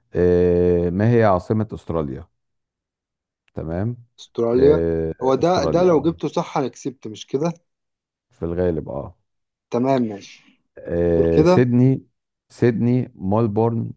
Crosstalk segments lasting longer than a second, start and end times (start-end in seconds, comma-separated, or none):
4.5-6.2